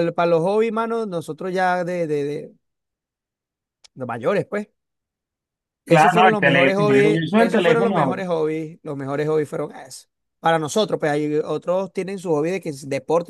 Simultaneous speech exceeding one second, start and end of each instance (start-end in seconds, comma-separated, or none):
5.8-8.2